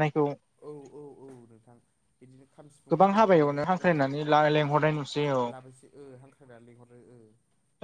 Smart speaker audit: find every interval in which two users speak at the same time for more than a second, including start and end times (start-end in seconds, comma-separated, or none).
2.9-5.0